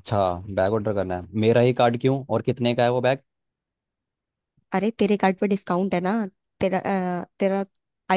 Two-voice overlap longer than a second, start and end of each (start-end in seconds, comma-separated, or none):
none